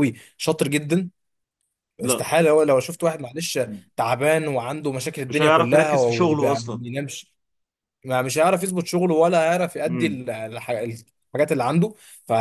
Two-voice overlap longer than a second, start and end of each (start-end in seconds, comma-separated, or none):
5.3-6.8